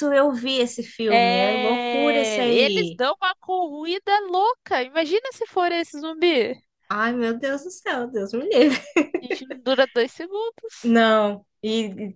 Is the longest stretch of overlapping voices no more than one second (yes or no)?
no